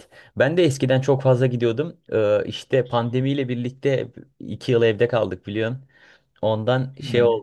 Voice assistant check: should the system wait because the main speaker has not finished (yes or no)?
yes